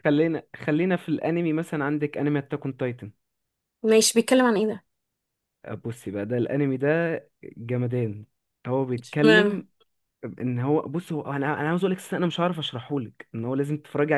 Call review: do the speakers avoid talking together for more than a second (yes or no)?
yes